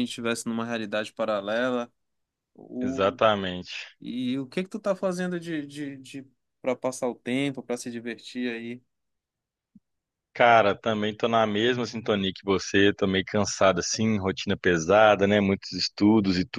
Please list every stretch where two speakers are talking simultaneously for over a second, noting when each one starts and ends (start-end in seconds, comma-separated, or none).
none